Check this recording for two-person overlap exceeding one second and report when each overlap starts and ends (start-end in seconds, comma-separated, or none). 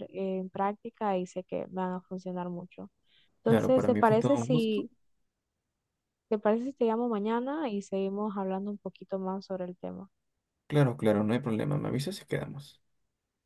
3.4-4.9